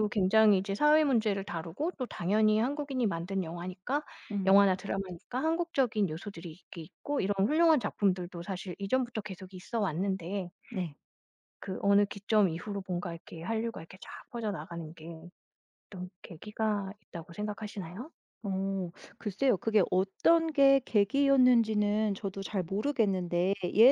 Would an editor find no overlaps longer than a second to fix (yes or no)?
yes